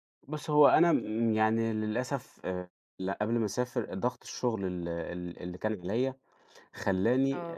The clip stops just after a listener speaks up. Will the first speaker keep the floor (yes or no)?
yes